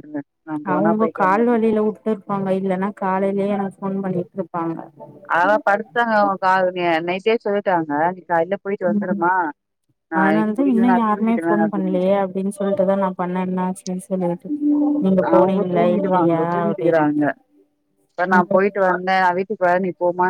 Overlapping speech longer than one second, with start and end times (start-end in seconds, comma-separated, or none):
10.2-12.0, 15.4-17.2